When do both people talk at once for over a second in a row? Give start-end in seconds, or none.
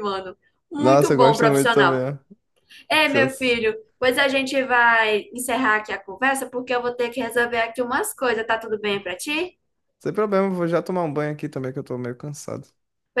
0.8-2.0